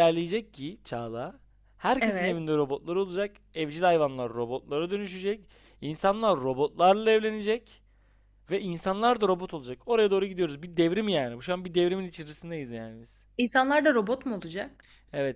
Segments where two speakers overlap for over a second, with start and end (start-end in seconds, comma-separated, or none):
none